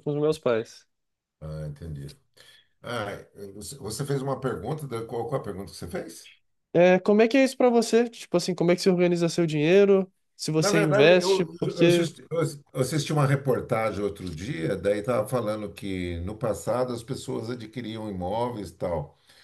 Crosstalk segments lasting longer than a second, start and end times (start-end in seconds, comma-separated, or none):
10.6-12.1